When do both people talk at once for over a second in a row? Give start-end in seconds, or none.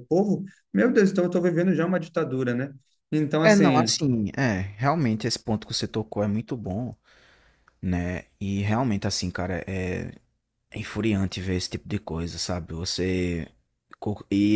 none